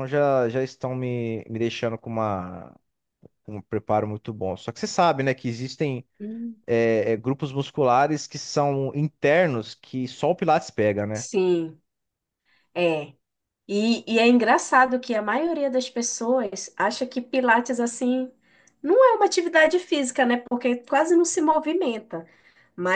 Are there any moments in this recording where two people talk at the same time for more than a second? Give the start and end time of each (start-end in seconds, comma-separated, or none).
none